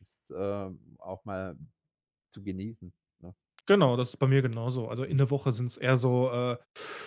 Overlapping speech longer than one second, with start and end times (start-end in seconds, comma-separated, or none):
none